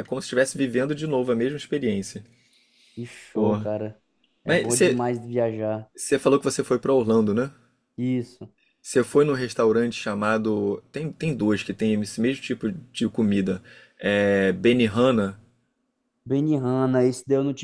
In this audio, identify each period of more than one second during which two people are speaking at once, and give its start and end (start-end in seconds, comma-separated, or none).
none